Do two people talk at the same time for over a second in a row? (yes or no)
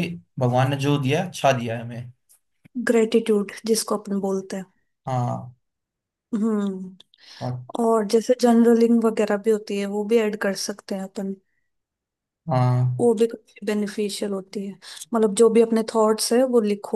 no